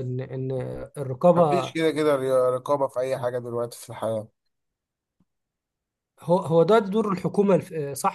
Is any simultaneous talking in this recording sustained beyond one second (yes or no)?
no